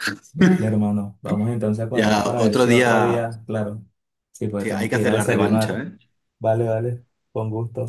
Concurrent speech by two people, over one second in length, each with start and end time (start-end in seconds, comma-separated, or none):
1.9-3.3, 4.6-5.8